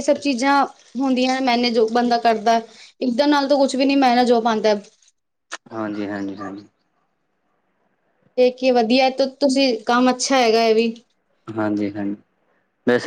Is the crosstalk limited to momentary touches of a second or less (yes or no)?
yes